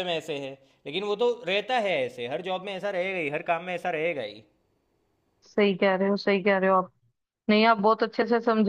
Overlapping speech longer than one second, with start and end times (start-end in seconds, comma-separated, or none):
none